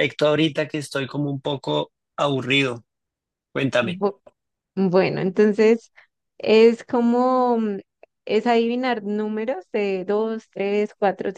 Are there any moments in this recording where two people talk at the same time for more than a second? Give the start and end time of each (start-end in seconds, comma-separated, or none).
none